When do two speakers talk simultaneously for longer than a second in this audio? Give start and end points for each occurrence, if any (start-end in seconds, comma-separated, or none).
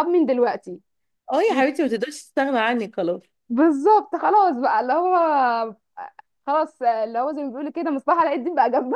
none